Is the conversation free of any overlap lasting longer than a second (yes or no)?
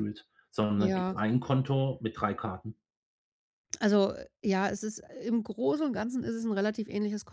yes